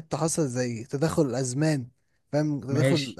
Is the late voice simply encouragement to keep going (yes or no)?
yes